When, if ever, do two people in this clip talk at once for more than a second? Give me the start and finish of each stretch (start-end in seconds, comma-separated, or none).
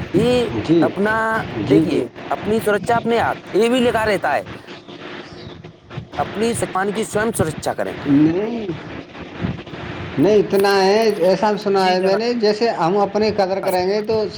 none